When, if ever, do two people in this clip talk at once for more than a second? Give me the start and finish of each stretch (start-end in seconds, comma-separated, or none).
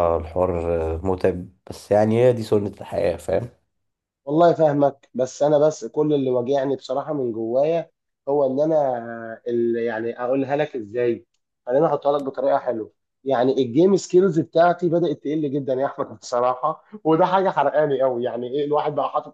none